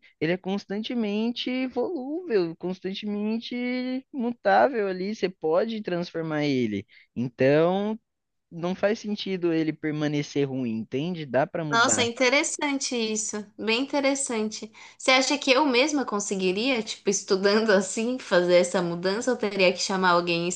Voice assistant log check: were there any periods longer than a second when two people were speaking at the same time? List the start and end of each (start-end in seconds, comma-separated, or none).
none